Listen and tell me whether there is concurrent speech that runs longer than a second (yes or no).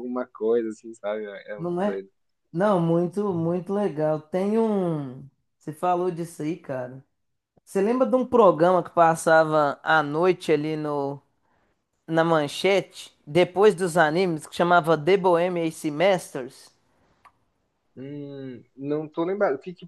no